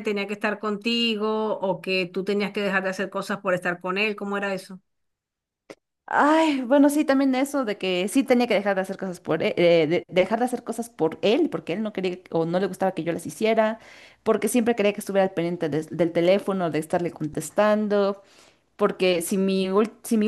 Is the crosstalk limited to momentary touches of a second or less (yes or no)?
yes